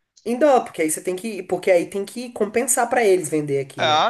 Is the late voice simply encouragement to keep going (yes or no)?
no